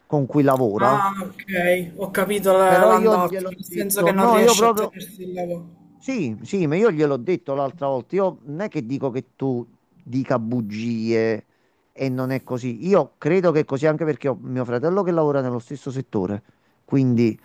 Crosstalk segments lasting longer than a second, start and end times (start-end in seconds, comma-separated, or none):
2.6-5.0